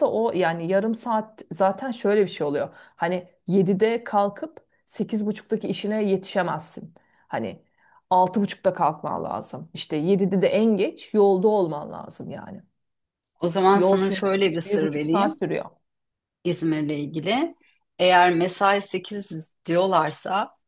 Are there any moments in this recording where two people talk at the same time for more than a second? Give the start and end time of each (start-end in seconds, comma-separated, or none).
13.7-15.4